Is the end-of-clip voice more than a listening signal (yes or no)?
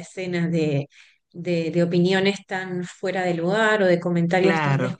no